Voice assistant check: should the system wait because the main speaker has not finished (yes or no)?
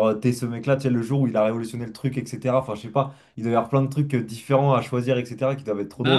no